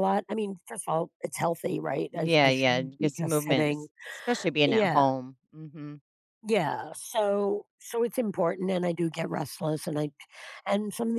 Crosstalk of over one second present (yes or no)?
yes